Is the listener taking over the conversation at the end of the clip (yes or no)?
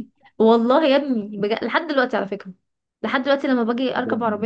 no